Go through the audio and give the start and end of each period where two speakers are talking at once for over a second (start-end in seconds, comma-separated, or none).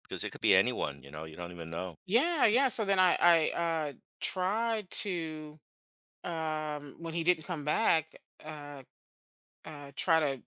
none